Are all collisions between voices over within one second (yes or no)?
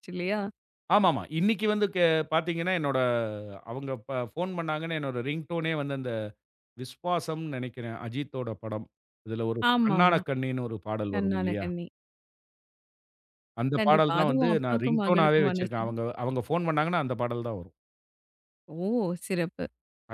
no